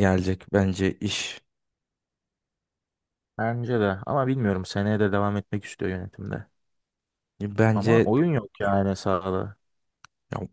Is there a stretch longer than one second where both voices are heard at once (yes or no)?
no